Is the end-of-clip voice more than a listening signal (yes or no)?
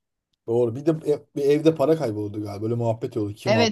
yes